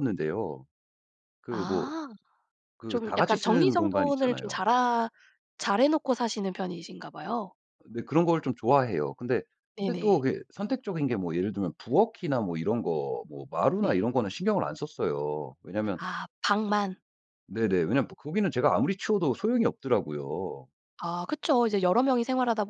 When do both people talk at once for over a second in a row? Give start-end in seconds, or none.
2.9-4.6